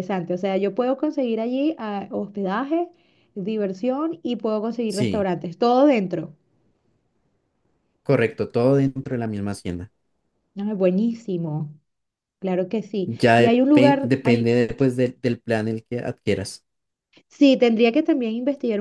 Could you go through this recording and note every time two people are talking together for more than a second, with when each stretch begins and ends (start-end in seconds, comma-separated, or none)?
13.1-14.6